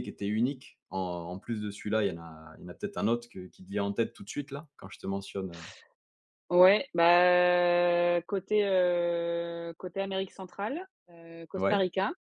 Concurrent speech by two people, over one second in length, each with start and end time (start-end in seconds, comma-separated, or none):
none